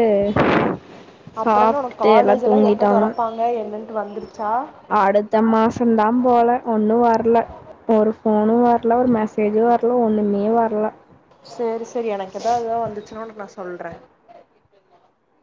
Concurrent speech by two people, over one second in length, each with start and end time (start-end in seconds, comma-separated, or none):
1.4-3.0